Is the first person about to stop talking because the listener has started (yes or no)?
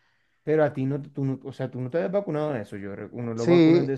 yes